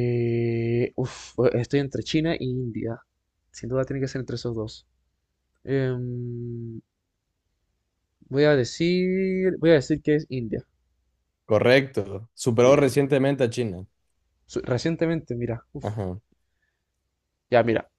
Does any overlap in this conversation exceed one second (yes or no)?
no